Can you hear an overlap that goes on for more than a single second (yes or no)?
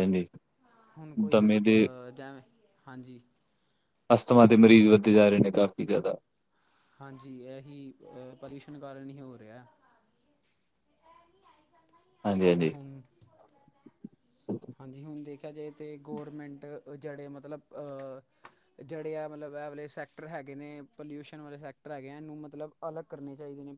no